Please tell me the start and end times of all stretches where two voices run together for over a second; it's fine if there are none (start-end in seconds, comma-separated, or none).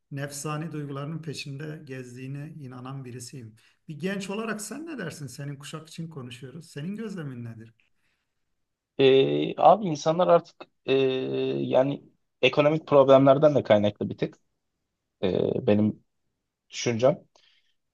none